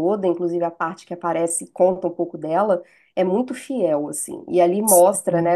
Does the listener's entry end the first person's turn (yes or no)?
no